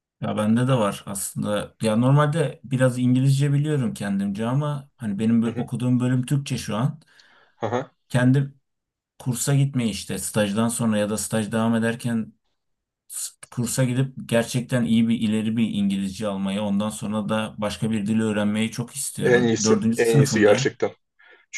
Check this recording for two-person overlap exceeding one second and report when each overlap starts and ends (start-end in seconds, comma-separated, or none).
19.2-20.8